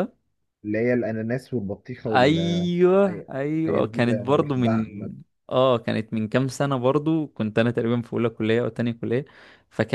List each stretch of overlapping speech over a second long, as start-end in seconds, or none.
3.1-4.9